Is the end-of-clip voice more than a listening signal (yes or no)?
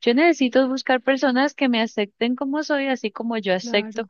no